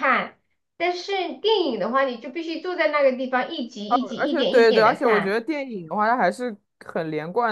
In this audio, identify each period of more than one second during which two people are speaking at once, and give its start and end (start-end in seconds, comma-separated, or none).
3.9-5.4